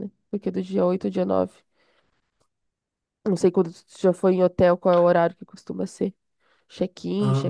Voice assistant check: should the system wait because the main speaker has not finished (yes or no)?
no